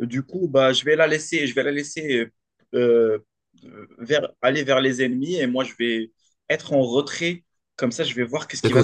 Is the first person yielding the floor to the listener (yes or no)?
yes